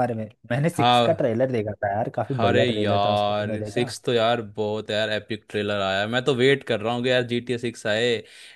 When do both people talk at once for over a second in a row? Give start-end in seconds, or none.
2.4-3.9